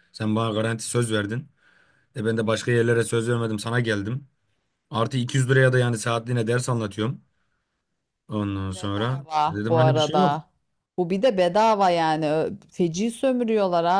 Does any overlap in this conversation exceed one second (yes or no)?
yes